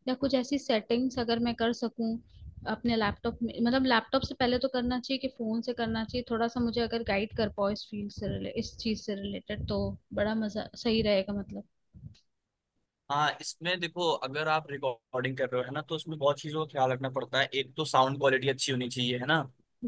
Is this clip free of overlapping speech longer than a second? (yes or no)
yes